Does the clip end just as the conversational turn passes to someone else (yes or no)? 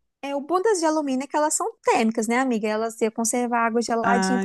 yes